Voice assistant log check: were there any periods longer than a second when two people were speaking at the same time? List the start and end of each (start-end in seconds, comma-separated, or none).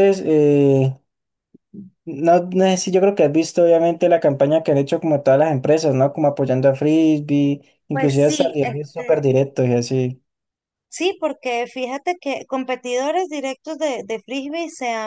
7.9-9.2